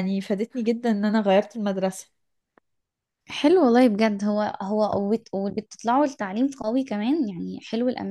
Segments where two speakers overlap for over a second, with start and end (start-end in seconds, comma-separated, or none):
none